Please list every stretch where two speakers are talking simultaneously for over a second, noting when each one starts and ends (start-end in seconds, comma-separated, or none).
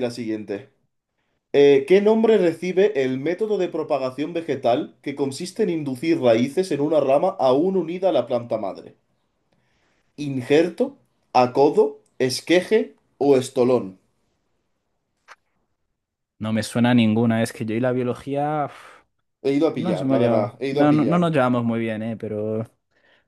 19.8-21.3